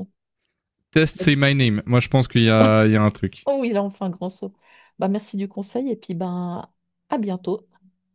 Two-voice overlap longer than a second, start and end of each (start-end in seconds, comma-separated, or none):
none